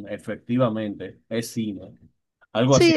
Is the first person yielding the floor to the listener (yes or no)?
yes